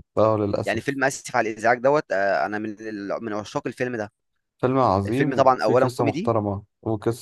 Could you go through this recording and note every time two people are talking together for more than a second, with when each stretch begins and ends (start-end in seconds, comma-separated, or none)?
5.1-6.3